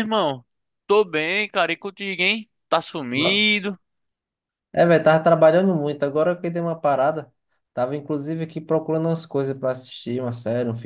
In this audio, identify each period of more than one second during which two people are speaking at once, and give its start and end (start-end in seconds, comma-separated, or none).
none